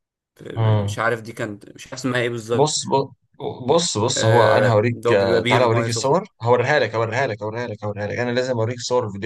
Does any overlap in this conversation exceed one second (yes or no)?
yes